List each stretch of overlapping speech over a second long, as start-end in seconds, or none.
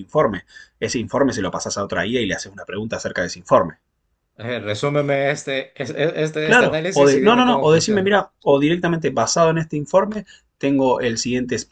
6.4-8.1